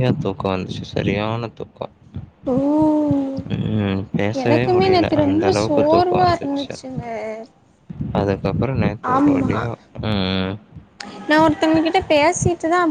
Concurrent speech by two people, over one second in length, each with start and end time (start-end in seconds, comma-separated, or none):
4.4-6.7